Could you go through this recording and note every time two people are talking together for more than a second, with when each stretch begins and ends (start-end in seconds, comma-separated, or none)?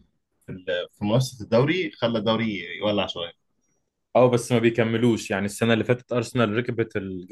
none